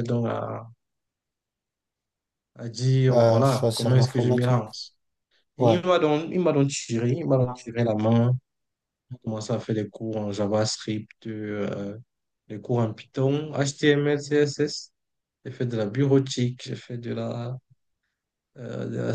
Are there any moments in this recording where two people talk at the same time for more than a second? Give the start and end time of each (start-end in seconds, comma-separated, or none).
3.1-4.7